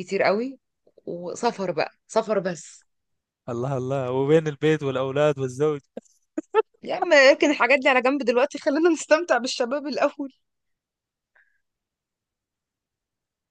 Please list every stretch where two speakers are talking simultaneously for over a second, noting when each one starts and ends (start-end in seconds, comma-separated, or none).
none